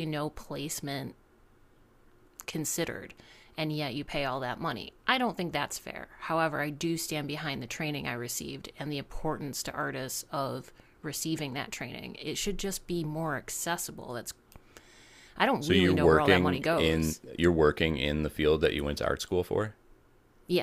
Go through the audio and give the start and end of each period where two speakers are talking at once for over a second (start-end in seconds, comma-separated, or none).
15.6-17.2